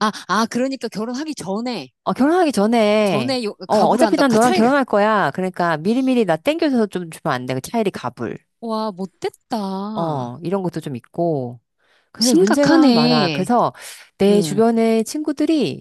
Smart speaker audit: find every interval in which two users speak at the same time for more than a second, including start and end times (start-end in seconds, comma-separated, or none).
3.0-4.7, 12.2-13.5